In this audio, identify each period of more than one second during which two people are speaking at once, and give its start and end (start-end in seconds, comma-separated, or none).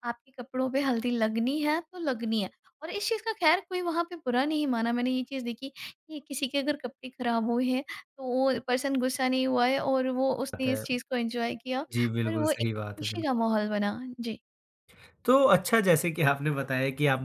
12.2-13.4